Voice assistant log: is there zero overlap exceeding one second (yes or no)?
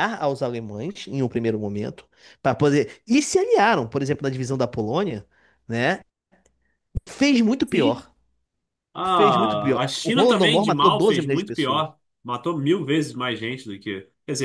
no